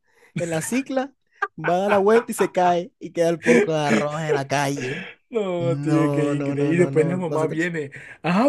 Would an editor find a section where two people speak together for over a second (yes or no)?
yes